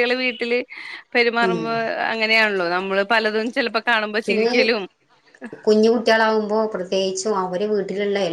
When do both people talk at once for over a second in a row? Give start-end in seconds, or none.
none